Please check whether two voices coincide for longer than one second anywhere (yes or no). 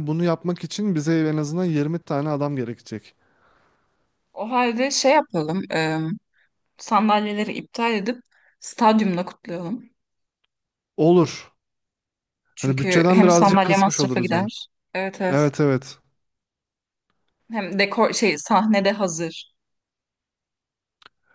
yes